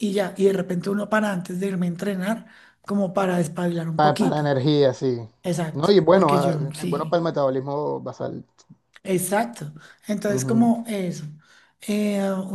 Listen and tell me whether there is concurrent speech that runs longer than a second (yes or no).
yes